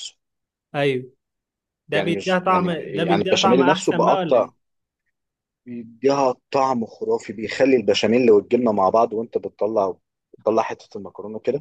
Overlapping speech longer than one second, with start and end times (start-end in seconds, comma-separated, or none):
1.9-4.5